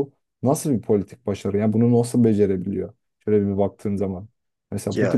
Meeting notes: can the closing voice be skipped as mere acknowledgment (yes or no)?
yes